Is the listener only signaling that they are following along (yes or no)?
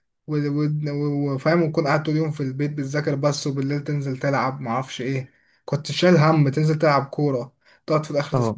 yes